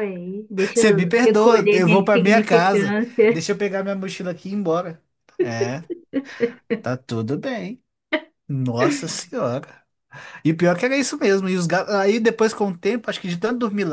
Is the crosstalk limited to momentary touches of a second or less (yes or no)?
no